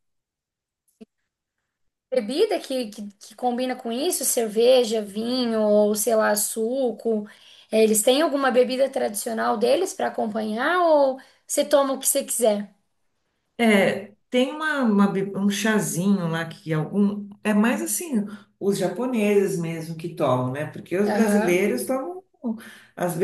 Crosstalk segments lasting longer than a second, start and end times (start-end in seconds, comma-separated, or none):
none